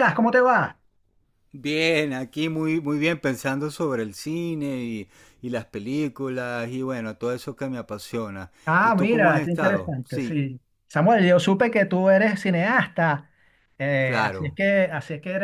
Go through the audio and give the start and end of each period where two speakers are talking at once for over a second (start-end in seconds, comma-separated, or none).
8.6-10.4